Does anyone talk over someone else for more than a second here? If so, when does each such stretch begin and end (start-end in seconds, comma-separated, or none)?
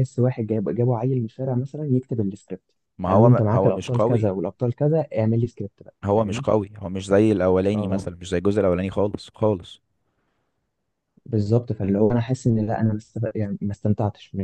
3.1-4.3